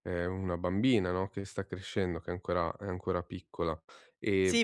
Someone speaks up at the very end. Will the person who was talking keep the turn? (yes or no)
no